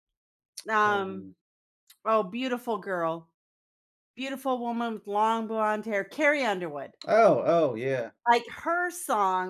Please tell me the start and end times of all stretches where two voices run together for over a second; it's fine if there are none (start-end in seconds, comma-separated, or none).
none